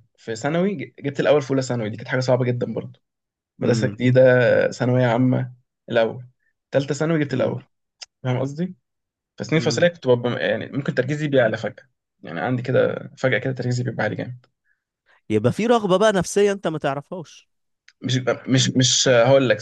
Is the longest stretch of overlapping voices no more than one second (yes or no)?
yes